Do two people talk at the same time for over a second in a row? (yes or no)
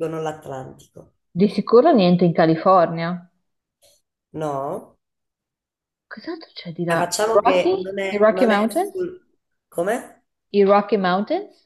yes